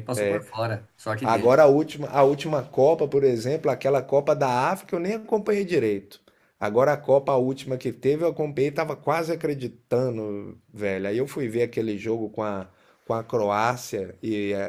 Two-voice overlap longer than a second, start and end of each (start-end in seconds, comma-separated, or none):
none